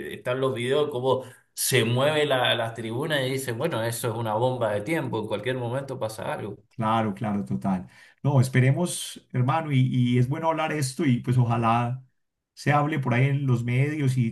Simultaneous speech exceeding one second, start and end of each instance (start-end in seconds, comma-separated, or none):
none